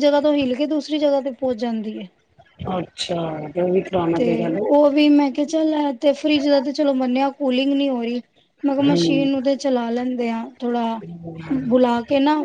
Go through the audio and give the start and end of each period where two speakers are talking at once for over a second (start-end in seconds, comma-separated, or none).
none